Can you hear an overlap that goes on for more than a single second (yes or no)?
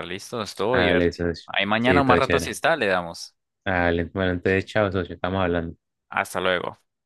yes